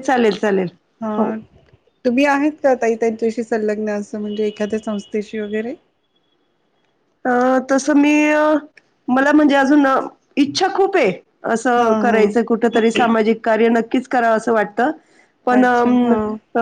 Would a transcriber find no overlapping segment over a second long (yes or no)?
yes